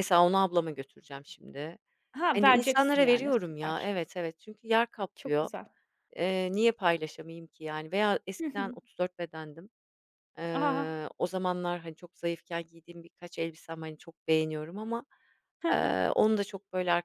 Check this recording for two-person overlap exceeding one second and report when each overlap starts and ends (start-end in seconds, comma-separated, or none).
2.4-3.9